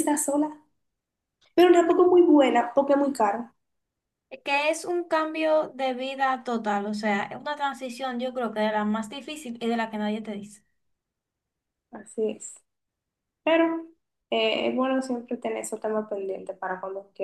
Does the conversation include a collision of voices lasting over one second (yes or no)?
no